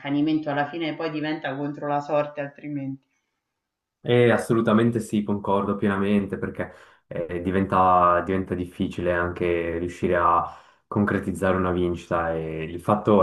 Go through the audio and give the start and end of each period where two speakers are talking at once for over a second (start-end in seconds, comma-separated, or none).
none